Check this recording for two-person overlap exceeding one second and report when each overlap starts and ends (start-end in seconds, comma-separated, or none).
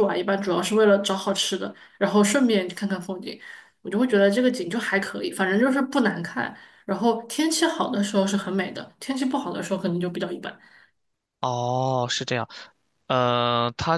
none